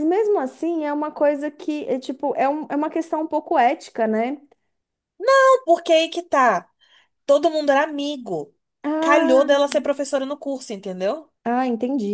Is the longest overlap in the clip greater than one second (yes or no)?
no